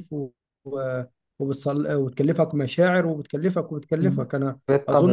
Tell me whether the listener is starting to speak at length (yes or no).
yes